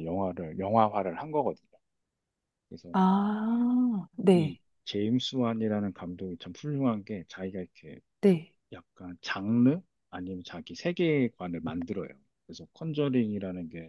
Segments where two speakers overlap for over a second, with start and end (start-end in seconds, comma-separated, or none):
none